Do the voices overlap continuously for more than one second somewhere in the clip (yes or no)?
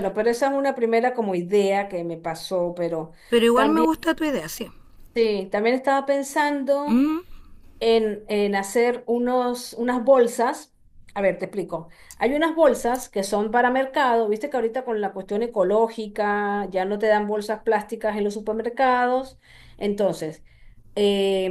no